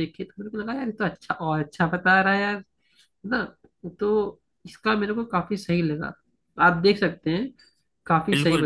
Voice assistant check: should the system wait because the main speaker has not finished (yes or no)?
no